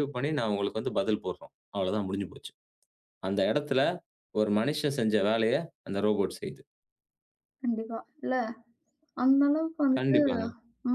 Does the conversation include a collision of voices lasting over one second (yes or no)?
no